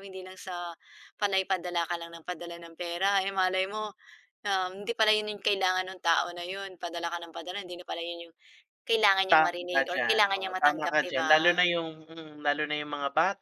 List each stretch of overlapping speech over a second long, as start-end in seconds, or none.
9.3-11.6